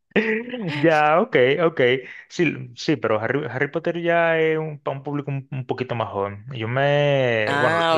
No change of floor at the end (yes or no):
yes